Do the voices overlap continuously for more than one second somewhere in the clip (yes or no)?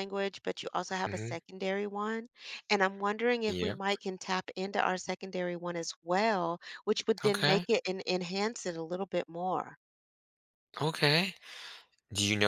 no